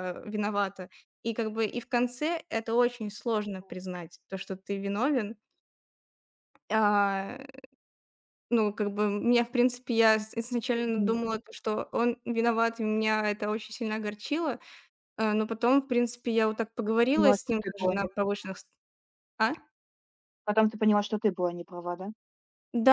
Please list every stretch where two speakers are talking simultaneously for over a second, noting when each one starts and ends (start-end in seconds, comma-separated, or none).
16.8-18.5